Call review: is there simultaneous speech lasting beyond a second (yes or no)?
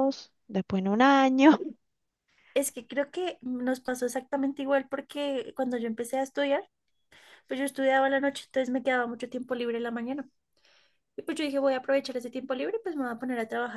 no